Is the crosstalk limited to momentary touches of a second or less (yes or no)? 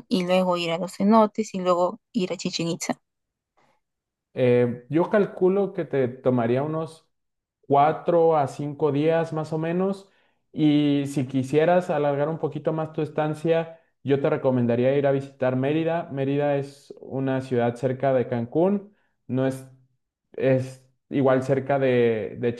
yes